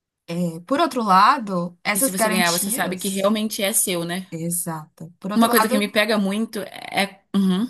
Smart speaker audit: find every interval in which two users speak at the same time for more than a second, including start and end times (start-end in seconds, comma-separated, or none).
1.9-3.3